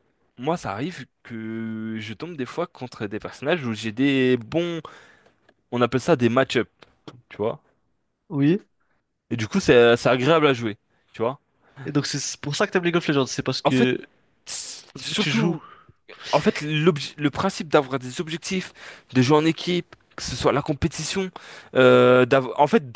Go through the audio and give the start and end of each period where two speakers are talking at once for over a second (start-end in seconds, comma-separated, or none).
none